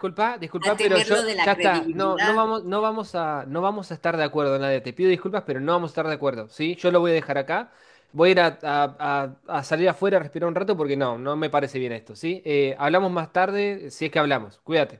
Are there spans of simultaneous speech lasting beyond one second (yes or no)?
yes